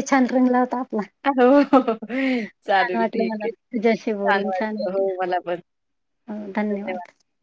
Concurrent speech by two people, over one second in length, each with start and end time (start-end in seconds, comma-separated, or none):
2.7-4.8